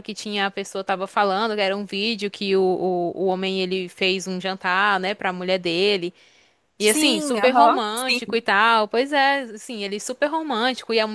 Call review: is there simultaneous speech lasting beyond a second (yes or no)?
yes